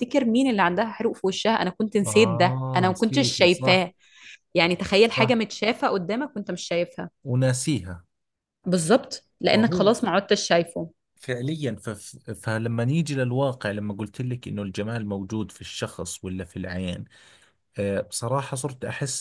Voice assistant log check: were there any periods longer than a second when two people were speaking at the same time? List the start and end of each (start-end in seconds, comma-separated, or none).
2.0-3.8